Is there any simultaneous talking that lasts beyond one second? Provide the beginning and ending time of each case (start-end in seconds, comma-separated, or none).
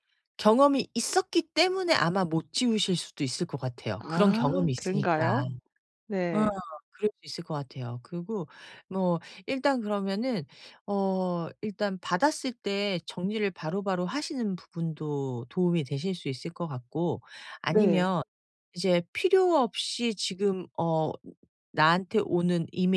4.0-5.4